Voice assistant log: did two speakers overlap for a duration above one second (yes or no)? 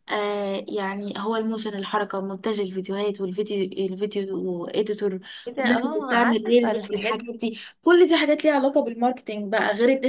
yes